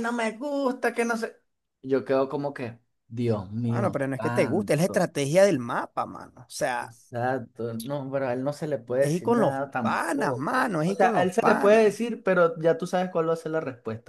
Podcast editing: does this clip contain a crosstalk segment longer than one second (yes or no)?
yes